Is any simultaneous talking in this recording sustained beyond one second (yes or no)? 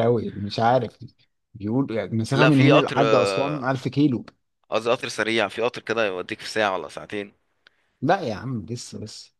yes